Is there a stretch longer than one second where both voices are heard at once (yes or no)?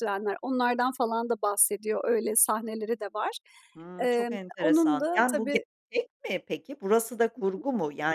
yes